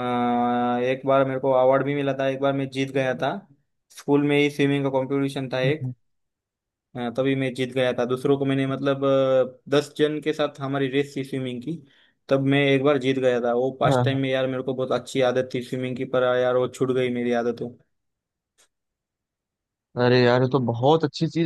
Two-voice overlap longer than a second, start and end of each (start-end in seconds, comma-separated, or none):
none